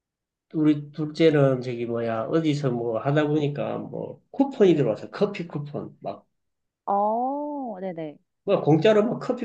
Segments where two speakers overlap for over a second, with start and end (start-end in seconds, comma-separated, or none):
none